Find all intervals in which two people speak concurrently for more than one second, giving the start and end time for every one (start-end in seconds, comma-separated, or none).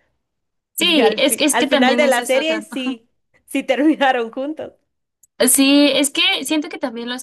0.8-2.4